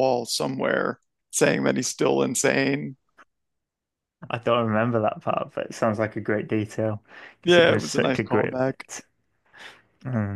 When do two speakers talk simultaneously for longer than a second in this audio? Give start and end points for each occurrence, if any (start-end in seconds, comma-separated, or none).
7.4-8.8